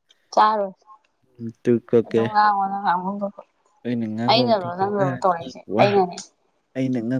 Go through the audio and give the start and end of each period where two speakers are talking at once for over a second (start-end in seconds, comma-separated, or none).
4.3-6.0